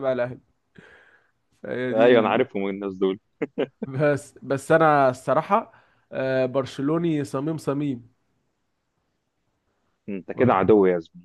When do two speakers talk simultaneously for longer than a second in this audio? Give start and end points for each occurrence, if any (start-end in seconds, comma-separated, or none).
none